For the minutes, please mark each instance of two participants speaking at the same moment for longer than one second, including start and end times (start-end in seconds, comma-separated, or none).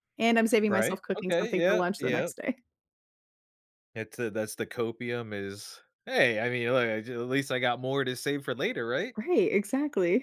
0.7-2.3